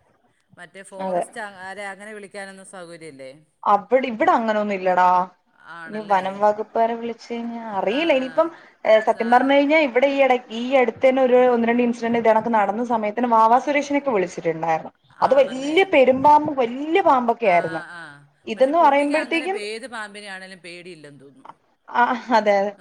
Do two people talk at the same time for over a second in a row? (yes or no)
no